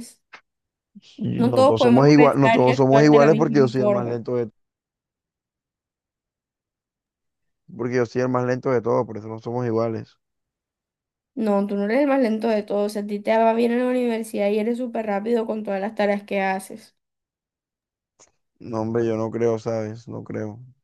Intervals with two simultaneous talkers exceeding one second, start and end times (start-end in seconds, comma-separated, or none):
1.4-4.2